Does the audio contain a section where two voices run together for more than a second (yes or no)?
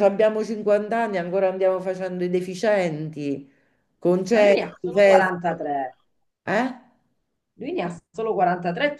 yes